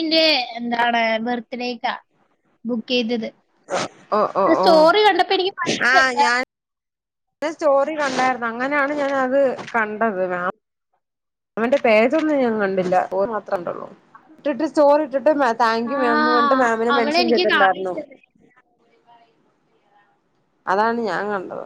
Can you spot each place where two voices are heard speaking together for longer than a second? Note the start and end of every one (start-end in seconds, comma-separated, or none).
15.9-17.9